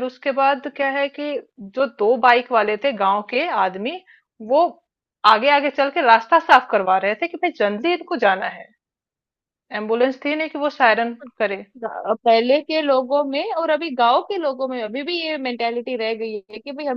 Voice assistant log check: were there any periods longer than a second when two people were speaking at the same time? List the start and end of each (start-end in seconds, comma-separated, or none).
none